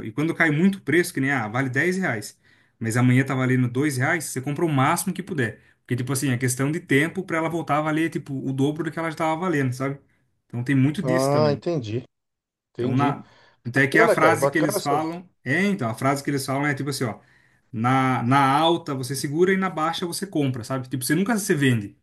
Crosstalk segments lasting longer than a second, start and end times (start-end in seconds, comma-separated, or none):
13.9-15.2